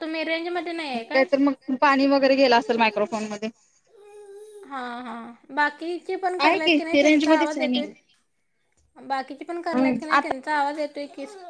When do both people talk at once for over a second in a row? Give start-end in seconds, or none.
6.4-7.8